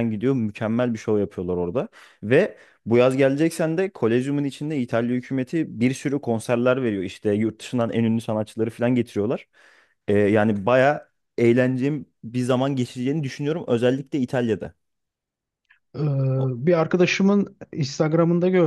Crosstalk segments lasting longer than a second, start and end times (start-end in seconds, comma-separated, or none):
none